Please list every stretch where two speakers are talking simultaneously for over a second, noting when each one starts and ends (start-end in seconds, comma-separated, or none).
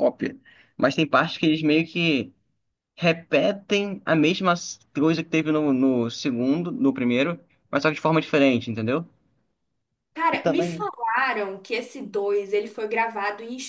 none